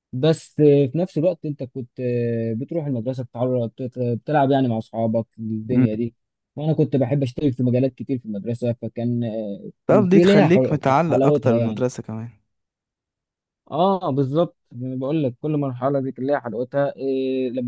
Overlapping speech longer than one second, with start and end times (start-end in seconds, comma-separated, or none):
10.1-11.8